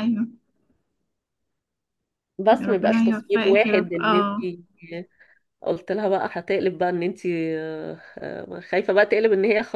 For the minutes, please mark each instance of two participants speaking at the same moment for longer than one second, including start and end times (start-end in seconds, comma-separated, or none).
2.6-4.5